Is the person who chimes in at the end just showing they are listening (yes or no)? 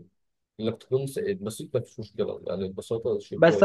no